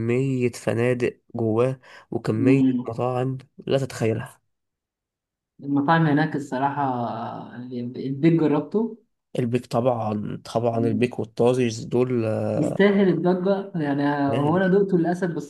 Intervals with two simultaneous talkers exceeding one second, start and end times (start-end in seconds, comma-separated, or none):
none